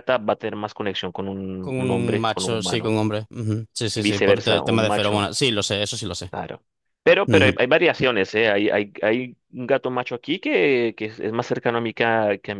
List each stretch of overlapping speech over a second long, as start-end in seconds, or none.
1.6-3.0, 3.9-5.3